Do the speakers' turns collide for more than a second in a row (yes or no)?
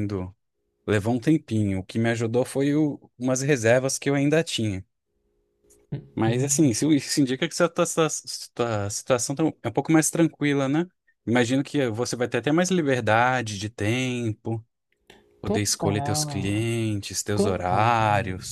yes